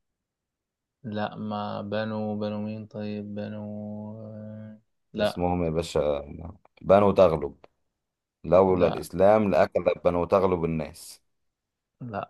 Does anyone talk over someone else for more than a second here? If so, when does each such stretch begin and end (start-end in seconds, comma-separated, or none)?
none